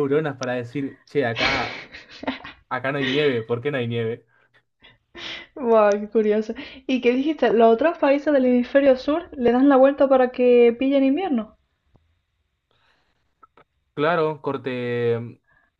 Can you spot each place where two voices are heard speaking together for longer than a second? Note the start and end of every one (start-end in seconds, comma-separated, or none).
none